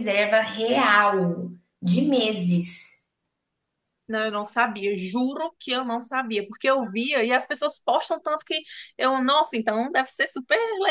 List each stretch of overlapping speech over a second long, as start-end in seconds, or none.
none